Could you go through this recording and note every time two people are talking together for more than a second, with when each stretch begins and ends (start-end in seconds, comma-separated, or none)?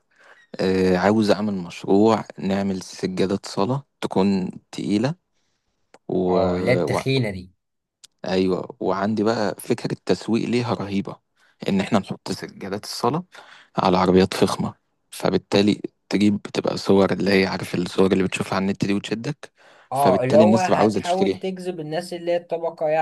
19.9-21.4